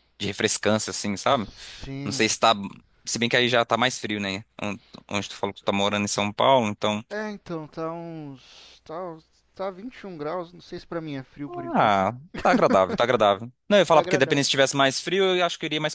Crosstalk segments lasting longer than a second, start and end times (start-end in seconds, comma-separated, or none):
none